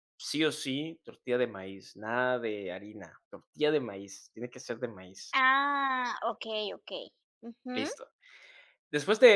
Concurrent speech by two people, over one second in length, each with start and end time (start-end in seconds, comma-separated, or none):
none